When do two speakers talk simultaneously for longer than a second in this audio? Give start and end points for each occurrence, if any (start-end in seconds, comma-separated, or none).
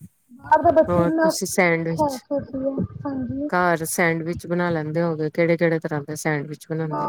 0.9-2.2